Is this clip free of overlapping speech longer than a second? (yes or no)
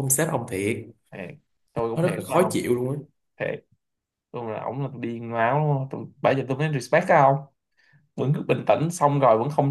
yes